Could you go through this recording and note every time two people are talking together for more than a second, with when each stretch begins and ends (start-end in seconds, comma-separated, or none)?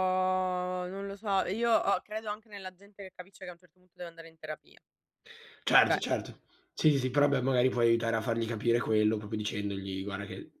none